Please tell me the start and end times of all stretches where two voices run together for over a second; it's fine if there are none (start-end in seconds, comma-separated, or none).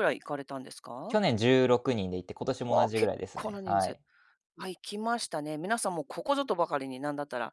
2.7-4.0